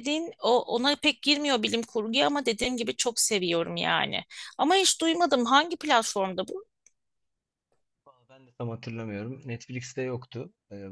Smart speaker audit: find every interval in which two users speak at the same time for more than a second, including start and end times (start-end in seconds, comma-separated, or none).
none